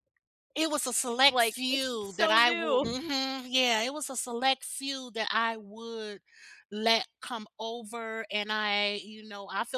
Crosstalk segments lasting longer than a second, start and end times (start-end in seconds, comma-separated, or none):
1.1-2.9